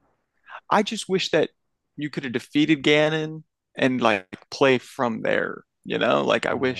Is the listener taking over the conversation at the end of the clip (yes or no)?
no